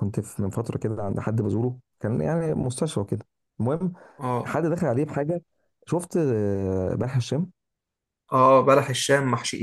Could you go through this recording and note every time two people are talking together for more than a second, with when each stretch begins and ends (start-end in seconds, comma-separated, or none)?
none